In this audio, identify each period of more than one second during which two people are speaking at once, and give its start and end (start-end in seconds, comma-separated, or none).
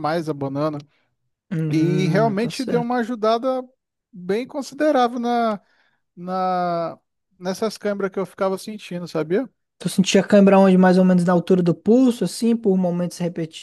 1.7-3.0